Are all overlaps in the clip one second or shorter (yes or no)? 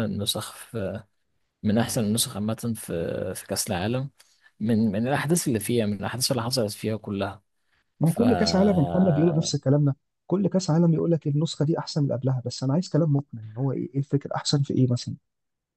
yes